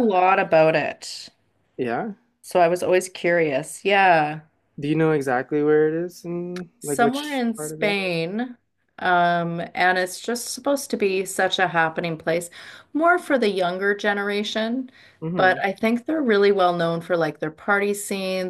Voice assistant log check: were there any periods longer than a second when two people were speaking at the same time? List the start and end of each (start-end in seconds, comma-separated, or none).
6.8-8.0